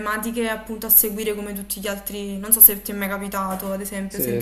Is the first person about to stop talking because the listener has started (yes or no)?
yes